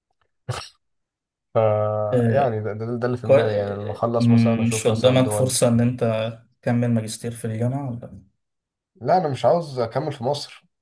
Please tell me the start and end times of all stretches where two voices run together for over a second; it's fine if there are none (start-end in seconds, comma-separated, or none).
3.2-5.6